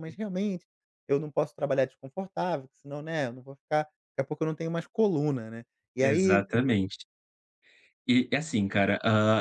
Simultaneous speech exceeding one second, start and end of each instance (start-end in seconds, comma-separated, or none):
none